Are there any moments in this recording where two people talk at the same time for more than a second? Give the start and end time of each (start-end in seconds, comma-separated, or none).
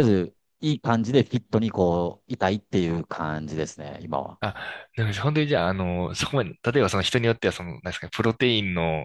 none